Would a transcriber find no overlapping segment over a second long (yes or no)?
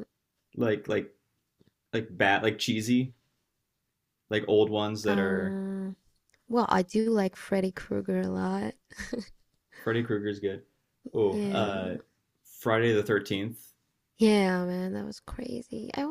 yes